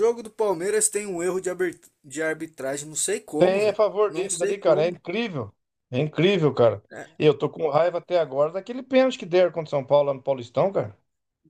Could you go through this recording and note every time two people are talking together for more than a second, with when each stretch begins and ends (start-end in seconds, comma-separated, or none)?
3.4-5.0